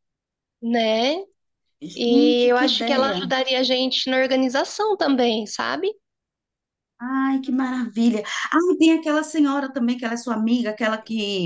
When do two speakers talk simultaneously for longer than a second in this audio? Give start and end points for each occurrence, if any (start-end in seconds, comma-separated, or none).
2.0-3.3